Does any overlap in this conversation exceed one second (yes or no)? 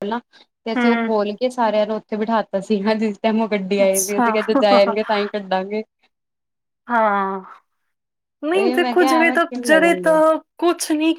yes